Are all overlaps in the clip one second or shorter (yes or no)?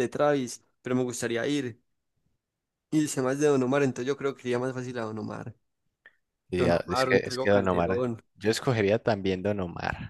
no